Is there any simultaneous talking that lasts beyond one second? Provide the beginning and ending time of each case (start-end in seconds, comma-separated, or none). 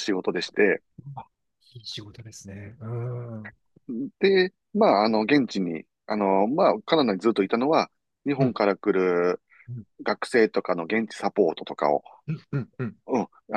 none